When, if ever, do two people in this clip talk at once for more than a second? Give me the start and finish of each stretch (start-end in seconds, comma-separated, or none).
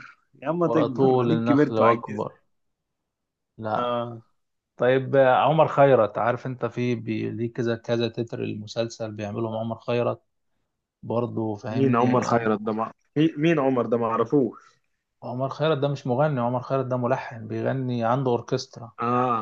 0.6-2.3